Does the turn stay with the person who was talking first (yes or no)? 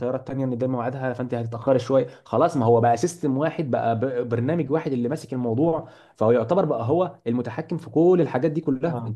no